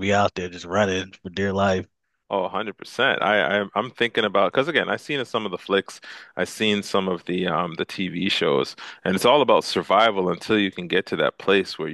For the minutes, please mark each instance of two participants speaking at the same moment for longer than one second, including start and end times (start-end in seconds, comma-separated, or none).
none